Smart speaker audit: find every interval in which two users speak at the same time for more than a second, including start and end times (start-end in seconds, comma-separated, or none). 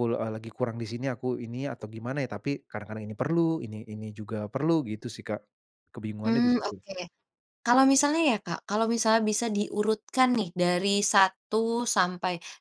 none